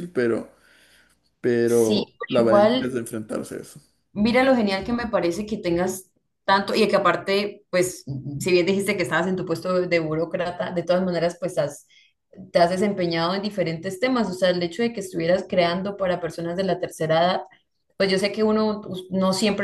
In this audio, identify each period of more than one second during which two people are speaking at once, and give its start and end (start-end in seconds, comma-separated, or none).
1.6-3.0